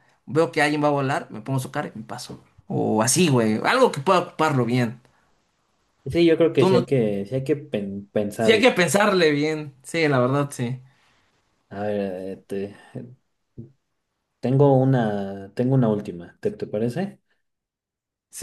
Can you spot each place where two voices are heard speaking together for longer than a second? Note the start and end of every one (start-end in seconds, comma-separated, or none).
none